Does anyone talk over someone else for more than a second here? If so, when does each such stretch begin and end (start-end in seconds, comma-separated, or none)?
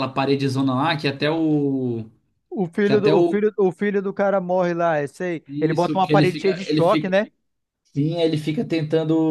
5.5-7.1